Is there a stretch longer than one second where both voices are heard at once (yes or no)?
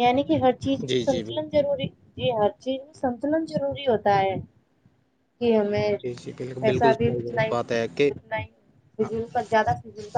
yes